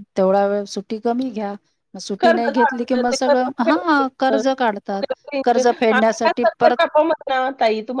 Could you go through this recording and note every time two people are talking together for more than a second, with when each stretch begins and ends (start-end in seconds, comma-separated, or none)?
2.2-4.4